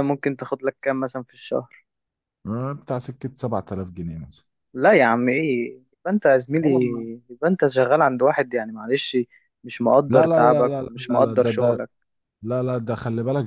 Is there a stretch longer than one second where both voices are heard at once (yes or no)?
yes